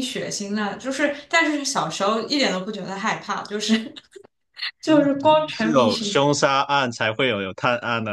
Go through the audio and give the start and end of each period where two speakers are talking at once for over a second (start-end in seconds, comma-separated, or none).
4.8-6.2